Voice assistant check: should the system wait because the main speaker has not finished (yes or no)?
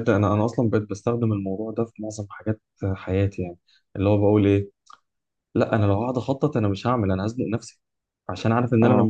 yes